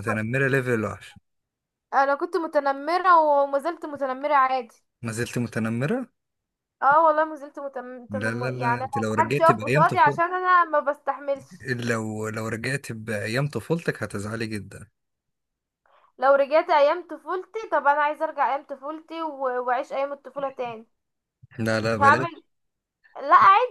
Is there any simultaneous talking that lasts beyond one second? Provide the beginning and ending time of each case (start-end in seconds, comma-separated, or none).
8.1-10.2